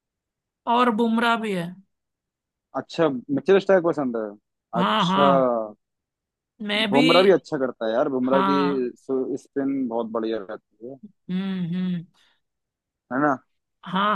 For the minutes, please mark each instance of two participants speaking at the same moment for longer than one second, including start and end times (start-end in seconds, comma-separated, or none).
none